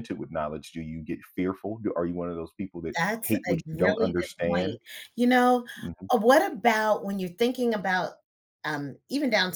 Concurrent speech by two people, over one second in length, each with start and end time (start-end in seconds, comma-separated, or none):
3.0-4.8